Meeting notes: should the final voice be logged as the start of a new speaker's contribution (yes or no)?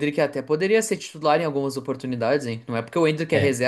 no